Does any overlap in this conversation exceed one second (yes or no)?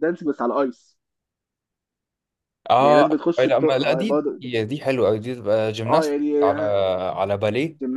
yes